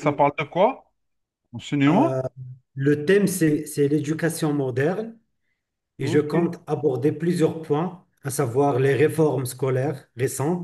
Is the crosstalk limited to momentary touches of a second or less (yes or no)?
yes